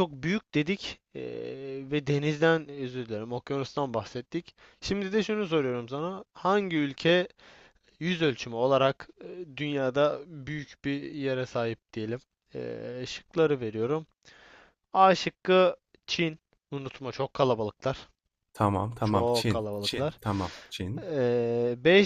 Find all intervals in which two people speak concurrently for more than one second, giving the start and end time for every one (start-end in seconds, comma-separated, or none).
19.0-20.2